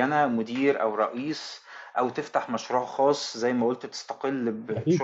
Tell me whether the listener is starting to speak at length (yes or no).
no